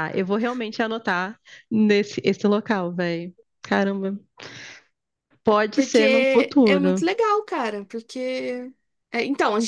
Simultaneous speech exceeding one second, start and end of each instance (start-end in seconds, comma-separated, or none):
5.7-7.0